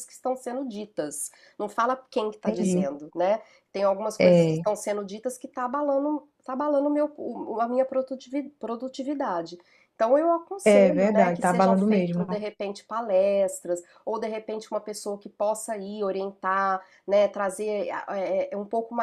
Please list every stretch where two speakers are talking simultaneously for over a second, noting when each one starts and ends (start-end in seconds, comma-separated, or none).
10.6-12.2